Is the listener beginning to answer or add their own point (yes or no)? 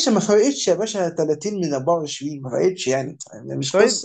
yes